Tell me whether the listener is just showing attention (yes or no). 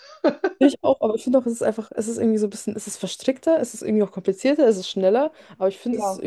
yes